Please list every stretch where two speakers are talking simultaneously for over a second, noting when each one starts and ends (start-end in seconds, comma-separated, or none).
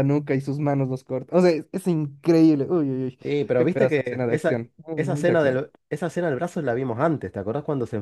3.6-5.6